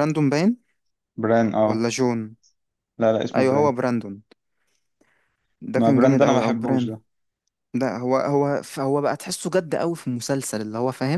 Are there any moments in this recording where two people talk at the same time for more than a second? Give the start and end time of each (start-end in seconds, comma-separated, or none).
5.7-7.0